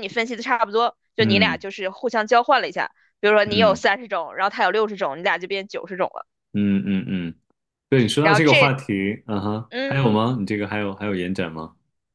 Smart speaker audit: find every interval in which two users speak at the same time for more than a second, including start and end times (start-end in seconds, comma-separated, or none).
none